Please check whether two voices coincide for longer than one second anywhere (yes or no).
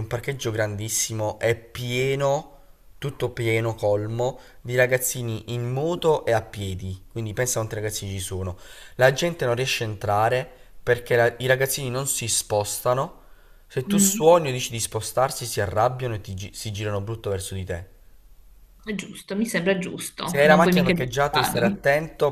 yes